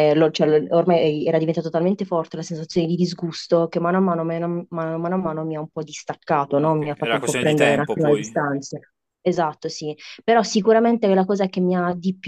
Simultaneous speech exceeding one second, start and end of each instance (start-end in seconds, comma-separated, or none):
6.6-8.4